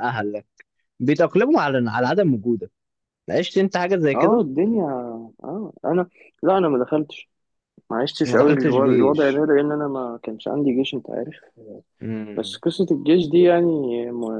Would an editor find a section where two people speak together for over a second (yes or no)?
yes